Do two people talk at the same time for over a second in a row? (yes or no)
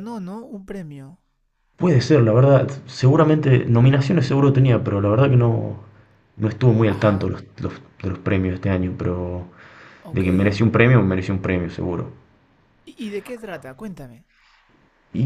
no